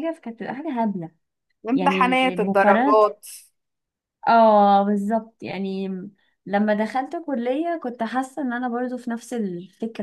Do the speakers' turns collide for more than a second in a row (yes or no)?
yes